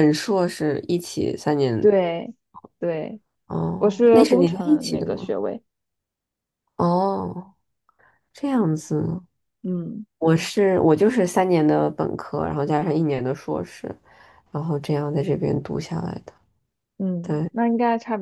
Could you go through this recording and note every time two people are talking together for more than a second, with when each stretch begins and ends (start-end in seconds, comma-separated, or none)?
3.8-5.4